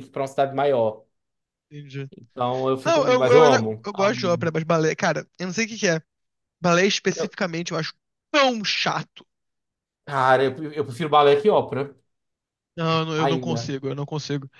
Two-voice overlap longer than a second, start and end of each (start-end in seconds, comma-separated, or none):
2.8-4.5